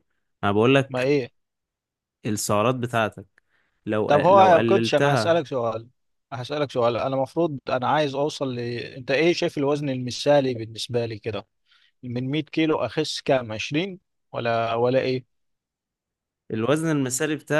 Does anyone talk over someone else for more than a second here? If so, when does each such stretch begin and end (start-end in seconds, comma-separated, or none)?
4.1-5.4